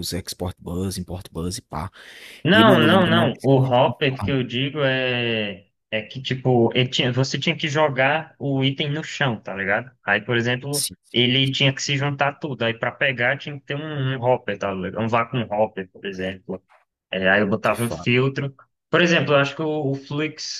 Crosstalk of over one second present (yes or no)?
yes